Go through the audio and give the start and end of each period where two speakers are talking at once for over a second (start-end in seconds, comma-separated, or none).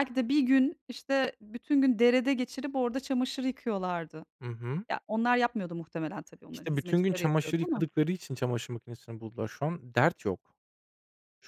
6.5-7.8